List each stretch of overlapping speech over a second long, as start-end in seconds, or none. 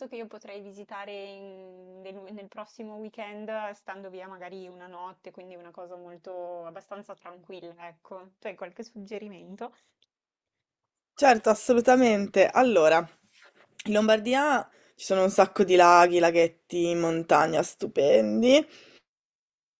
none